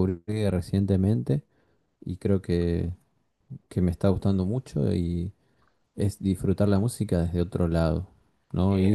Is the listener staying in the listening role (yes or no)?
no